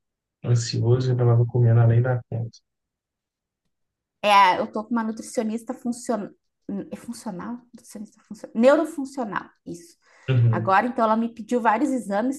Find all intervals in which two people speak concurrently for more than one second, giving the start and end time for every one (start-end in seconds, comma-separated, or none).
none